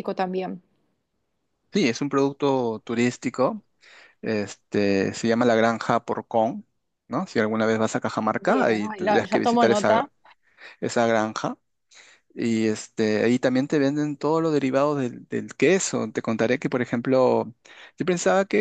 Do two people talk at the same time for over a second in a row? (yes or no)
yes